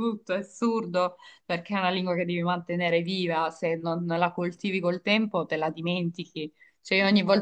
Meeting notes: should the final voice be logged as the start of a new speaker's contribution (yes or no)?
no